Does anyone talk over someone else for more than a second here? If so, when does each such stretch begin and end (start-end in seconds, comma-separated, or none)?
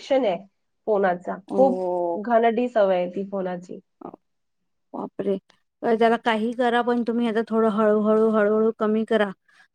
none